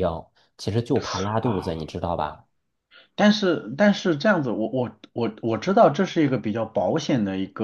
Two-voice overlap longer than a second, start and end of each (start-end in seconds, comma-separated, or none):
none